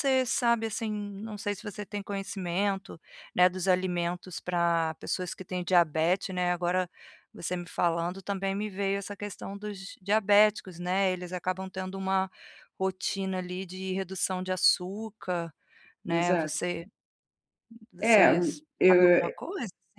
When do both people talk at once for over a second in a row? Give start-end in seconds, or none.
18.0-19.3